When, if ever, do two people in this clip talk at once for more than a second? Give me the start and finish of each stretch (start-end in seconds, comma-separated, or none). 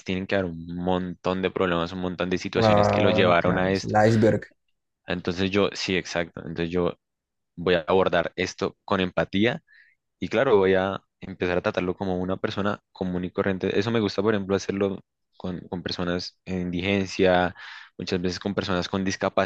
2.5-4.0